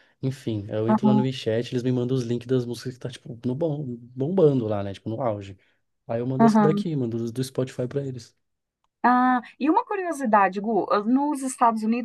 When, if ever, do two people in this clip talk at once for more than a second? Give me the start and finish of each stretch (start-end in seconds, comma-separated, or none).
none